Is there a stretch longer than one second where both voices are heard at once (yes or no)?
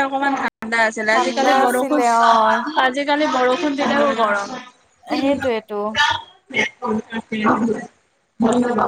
yes